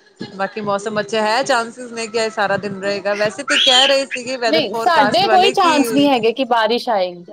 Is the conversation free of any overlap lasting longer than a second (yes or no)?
no